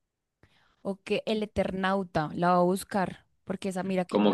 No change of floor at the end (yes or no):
no